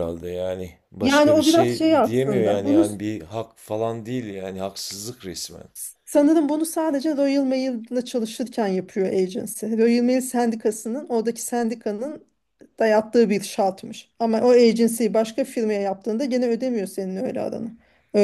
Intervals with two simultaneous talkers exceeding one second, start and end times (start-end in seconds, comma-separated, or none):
1.0-2.9